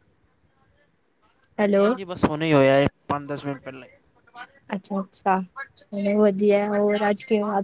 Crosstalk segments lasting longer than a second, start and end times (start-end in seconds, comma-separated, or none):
none